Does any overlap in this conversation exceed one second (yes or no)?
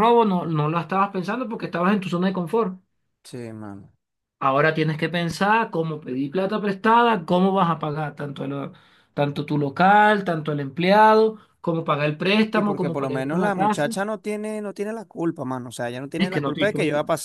yes